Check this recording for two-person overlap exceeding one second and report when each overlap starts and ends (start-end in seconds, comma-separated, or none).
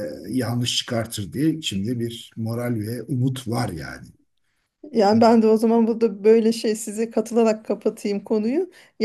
none